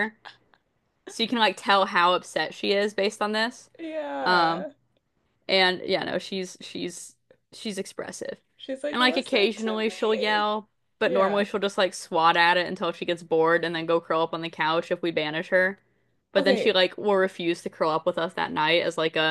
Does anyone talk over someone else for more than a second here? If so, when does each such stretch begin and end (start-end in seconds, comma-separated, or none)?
8.9-10.4